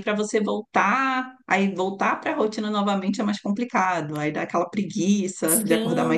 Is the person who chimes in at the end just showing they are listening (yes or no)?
no